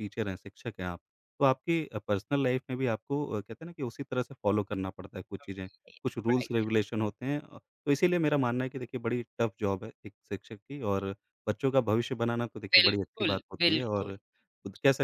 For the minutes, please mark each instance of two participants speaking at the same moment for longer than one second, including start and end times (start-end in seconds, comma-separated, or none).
12.7-14.1